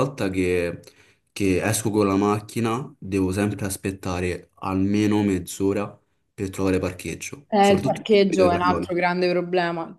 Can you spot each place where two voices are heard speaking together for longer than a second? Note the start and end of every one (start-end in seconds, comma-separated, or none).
7.5-8.9